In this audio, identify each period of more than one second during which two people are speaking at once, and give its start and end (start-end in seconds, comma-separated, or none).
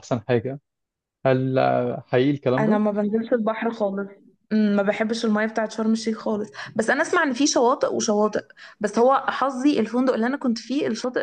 none